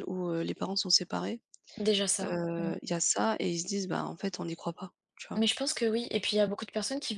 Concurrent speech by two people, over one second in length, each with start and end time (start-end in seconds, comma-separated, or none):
none